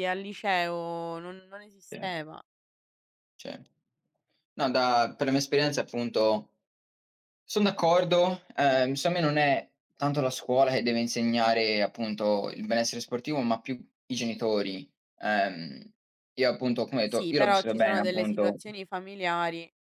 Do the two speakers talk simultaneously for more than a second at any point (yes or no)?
yes